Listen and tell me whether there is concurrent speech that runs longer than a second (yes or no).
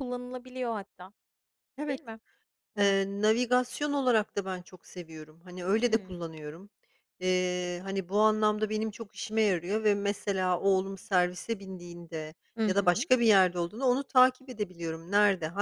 no